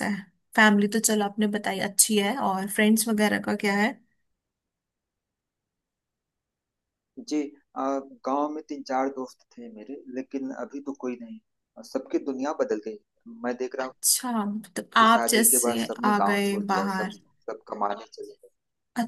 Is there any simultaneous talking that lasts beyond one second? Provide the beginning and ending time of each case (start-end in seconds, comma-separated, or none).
15.0-17.2